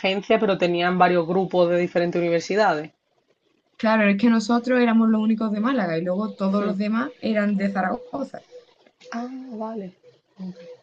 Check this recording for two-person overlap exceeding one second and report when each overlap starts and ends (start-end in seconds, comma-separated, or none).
none